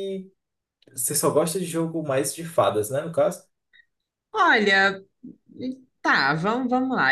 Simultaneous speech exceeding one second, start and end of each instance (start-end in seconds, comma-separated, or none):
none